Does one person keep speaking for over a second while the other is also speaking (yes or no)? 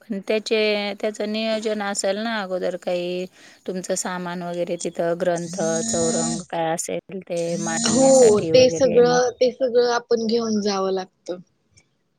yes